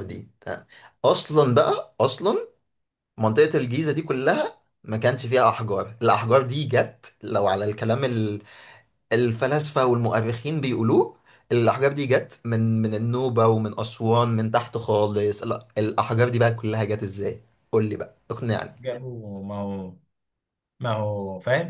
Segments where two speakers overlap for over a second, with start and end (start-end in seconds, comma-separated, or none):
none